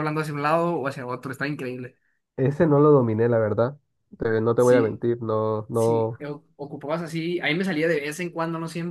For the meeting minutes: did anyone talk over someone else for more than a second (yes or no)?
no